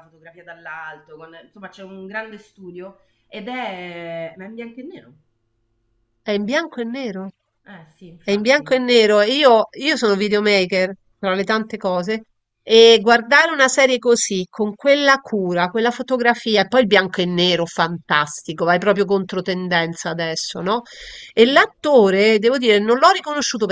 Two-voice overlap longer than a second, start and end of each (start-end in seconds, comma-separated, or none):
none